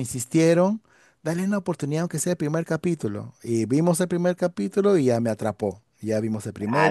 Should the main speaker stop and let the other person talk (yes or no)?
yes